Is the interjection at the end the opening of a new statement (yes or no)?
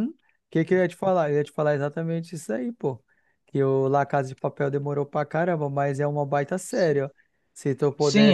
yes